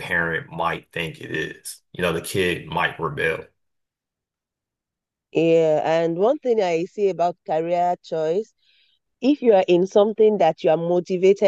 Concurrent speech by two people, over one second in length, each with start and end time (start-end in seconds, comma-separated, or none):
none